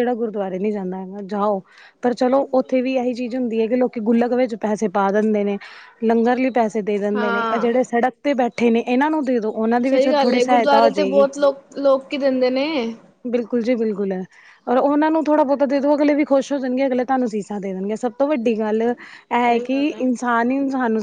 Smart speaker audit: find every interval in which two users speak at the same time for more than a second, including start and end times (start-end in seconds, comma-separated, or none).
9.9-11.3